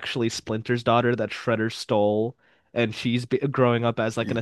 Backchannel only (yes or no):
yes